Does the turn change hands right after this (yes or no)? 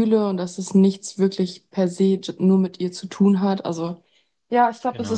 no